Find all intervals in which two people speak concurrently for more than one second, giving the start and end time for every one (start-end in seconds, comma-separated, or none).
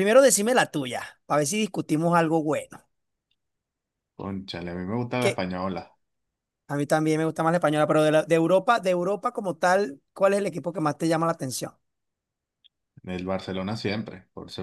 none